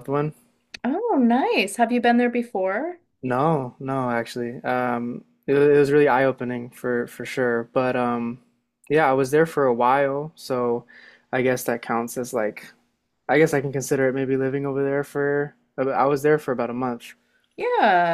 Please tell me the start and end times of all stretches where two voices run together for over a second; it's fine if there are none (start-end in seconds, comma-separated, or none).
none